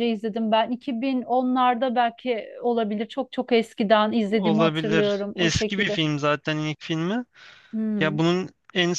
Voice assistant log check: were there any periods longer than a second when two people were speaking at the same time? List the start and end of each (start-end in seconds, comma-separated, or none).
4.3-6.0